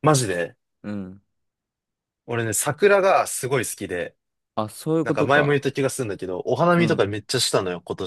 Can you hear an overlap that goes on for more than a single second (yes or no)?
no